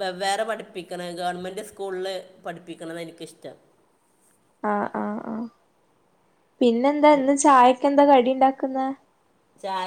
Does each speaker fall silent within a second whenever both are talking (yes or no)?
yes